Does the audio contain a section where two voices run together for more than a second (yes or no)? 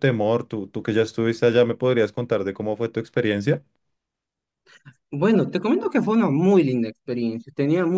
no